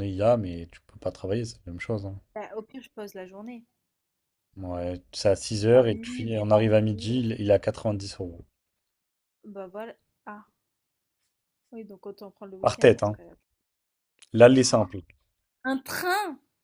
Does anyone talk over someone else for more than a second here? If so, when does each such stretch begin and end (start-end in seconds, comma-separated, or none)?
5.7-7.1